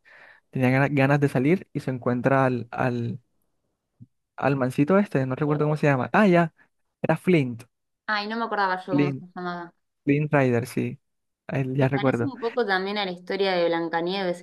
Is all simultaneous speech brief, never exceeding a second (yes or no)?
yes